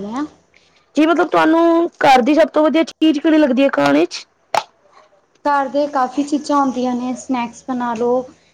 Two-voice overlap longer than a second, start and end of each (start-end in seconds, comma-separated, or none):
none